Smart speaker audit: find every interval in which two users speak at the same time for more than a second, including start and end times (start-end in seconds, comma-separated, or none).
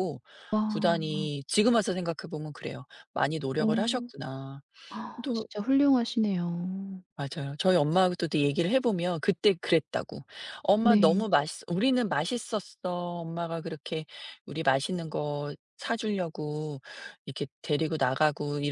none